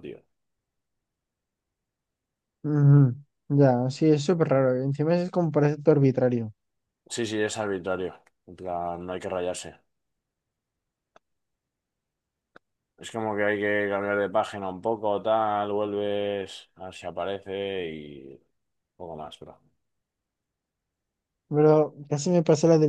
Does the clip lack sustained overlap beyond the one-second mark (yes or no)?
yes